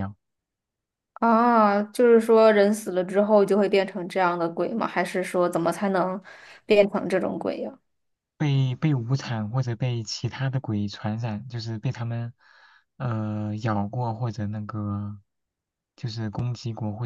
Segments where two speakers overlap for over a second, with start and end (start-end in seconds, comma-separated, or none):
none